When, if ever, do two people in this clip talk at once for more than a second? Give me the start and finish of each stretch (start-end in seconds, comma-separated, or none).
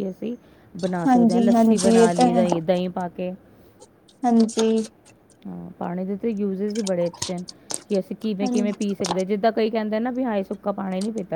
1.1-2.4